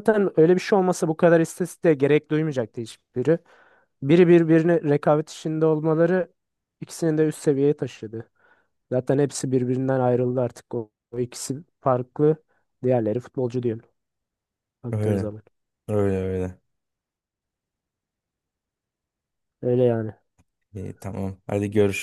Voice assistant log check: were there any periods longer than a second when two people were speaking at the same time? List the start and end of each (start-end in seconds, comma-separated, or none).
none